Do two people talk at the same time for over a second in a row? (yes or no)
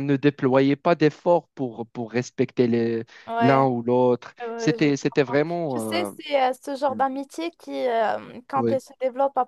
yes